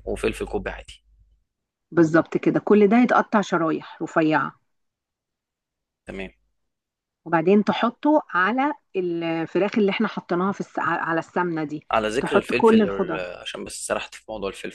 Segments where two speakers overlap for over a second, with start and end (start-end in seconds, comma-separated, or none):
11.9-13.2